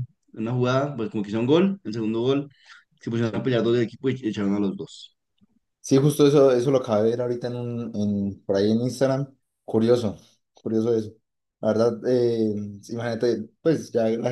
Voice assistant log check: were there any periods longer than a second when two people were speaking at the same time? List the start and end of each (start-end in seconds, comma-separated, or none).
none